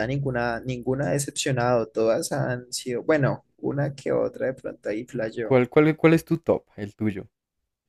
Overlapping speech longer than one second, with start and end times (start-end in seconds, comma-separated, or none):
none